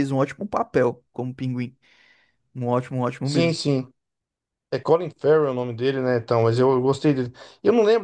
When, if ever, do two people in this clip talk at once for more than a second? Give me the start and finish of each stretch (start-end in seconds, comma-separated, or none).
none